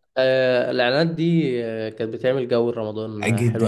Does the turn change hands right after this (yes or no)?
yes